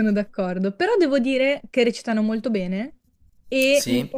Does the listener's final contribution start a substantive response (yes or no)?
no